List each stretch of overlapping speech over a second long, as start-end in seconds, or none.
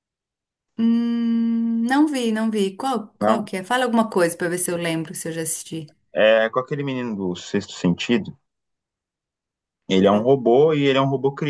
none